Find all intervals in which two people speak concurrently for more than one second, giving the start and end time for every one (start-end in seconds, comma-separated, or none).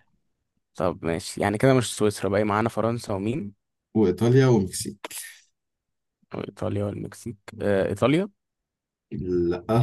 none